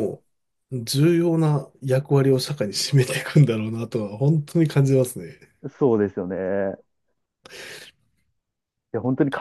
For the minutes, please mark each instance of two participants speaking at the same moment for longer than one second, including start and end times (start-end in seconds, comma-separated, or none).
none